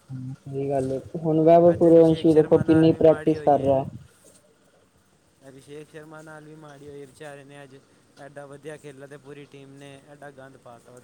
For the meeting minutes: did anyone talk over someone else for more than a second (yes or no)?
yes